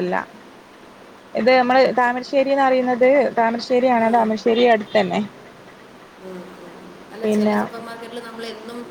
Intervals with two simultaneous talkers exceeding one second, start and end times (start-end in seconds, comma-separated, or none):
none